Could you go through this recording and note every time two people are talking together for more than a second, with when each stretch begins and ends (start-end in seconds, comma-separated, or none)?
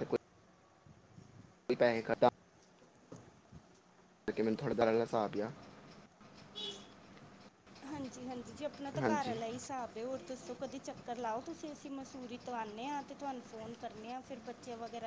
none